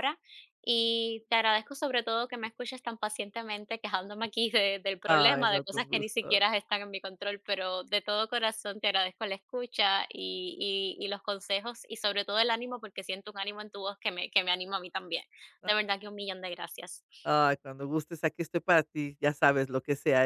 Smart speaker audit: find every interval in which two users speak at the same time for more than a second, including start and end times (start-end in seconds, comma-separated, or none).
5.1-6.4